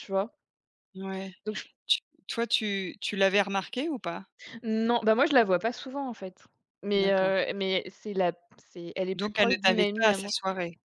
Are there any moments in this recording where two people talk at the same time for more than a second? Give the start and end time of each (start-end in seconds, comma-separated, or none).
9.1-10.3